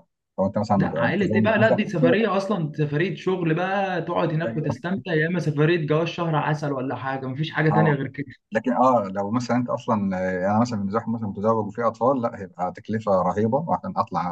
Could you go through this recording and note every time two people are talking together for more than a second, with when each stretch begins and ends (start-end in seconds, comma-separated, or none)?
0.8-2.2